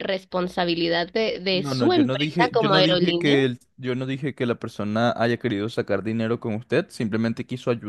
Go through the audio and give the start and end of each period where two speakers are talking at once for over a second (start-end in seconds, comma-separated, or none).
1.5-3.4